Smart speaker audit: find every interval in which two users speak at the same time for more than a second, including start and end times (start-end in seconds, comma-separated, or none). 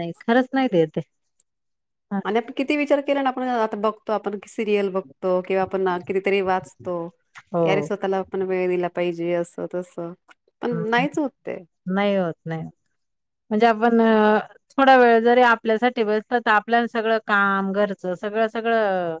none